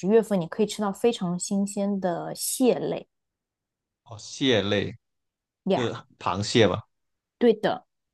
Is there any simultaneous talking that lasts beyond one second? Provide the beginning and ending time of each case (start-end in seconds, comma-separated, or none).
none